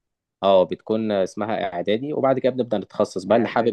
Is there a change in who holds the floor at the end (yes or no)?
no